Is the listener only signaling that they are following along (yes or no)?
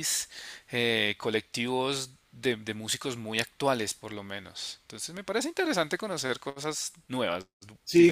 no